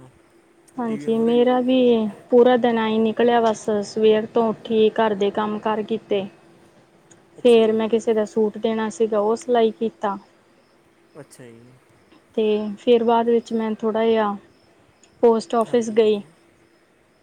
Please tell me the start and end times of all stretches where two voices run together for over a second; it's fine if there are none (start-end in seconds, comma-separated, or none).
none